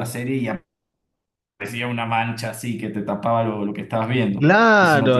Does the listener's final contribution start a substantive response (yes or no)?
yes